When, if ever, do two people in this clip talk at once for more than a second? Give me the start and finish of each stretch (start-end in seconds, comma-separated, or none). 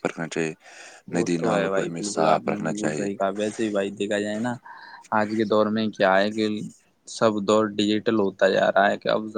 1.1-3.1